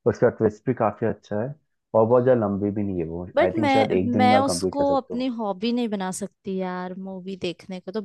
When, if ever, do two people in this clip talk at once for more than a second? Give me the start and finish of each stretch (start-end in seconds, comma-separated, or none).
3.4-5.3